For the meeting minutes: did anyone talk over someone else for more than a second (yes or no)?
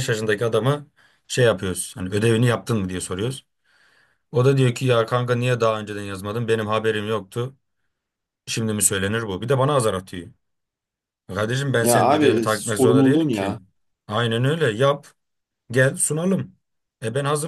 yes